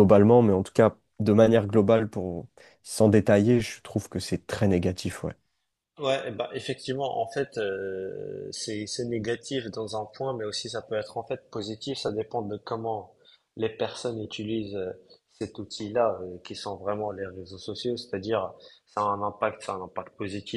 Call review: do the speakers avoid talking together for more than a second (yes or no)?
yes